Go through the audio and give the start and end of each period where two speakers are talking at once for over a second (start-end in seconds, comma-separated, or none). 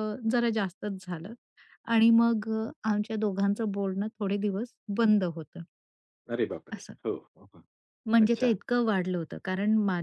none